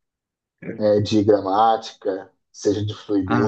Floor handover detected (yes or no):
yes